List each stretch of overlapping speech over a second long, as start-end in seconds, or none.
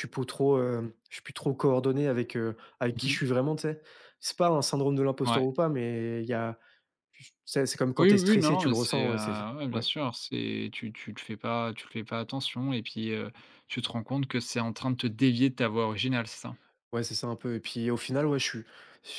8.0-9.9